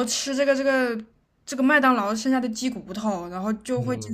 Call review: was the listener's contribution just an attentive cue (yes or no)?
no